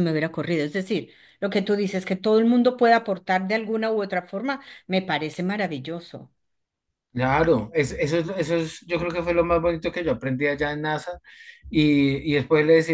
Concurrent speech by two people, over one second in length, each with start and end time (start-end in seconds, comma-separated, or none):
none